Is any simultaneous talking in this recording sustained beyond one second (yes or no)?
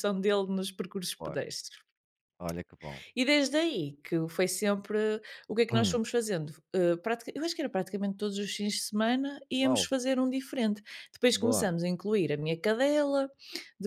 no